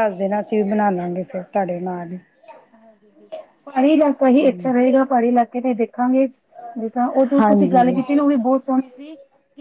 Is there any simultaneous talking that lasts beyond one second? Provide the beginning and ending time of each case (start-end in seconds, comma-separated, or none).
none